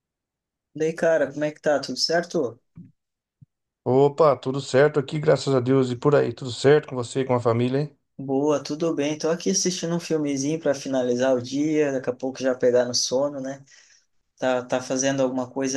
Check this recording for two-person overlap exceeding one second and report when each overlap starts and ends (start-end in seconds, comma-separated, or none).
none